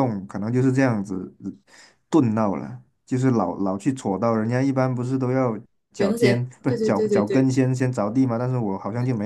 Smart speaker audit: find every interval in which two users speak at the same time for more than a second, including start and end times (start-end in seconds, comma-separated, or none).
6.0-7.5